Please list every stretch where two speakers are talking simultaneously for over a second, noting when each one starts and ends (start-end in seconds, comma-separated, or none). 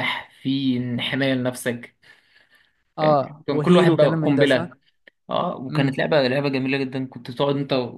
3.0-4.7